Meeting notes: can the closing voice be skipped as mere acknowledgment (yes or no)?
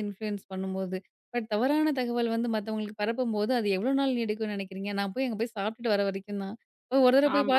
yes